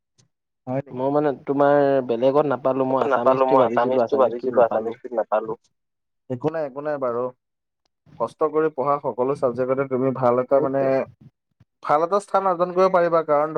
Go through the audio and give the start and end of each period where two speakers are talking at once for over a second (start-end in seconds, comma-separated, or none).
2.9-4.9